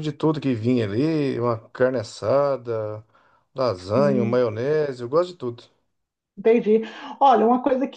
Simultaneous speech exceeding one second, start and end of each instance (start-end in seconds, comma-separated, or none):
none